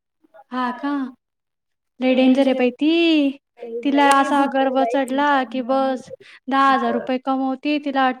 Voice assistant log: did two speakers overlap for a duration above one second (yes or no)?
yes